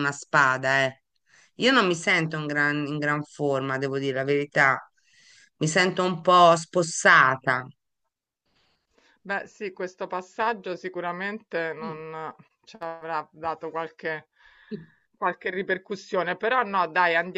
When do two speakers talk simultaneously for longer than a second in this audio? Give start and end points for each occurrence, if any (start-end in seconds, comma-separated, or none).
none